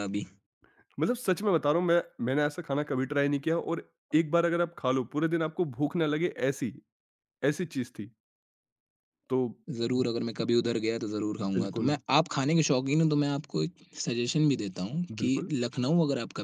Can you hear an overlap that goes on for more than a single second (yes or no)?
no